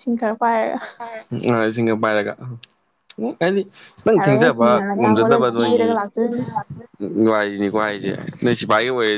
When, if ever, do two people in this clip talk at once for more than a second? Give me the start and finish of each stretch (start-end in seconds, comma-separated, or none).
4.2-5.9